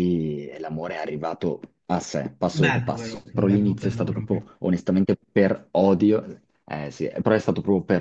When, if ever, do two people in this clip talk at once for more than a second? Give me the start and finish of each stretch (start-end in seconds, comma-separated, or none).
2.5-4.4